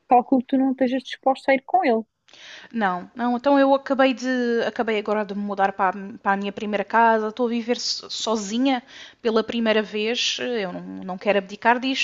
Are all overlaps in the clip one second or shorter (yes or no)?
yes